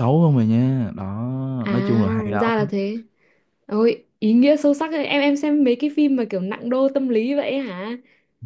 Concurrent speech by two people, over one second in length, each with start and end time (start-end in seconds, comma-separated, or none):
none